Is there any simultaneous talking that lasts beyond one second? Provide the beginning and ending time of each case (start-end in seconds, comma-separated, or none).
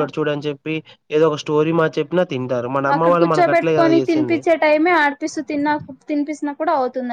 2.9-4.4